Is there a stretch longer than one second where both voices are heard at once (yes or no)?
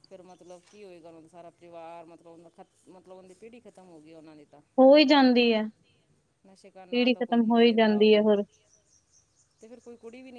yes